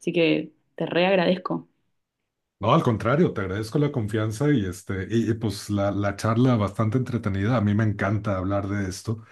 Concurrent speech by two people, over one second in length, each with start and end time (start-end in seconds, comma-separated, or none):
none